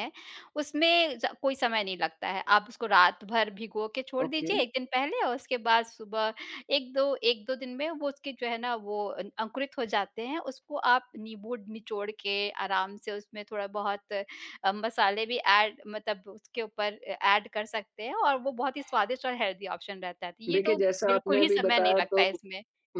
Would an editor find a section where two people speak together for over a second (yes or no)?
yes